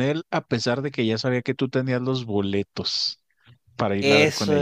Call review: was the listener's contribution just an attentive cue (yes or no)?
no